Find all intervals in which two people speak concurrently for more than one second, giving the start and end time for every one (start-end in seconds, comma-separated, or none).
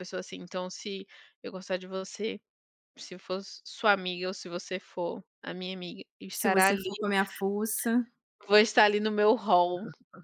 none